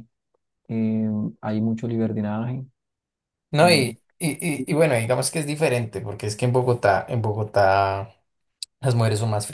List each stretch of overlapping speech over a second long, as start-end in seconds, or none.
none